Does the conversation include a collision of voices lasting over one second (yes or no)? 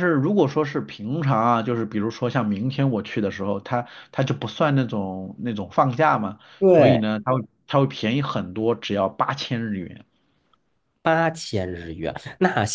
no